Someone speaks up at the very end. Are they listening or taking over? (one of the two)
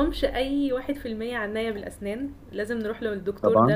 listening